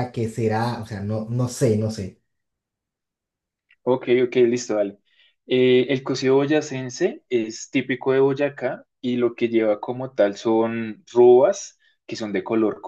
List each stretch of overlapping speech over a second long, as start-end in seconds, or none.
none